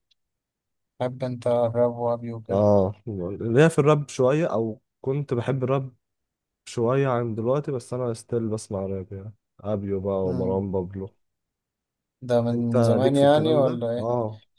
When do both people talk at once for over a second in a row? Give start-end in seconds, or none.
12.5-14.1